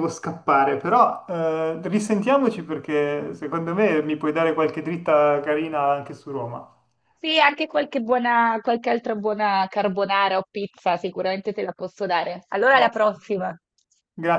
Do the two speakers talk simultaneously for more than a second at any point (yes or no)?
no